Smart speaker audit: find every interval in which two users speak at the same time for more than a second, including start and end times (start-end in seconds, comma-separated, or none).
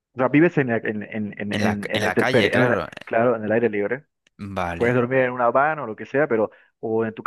1.5-2.9